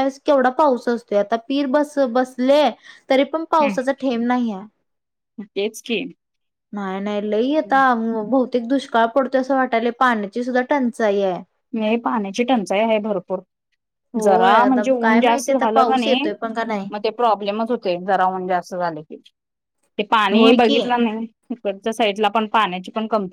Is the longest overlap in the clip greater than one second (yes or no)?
yes